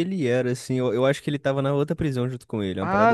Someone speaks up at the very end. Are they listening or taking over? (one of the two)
taking over